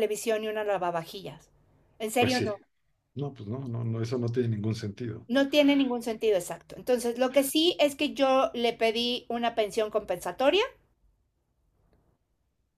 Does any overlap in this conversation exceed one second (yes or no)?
no